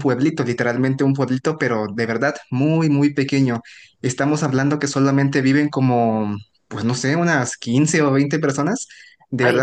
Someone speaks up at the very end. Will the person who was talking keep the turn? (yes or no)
yes